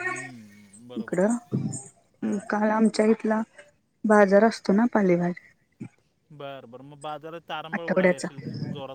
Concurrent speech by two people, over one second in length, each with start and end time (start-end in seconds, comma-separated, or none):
none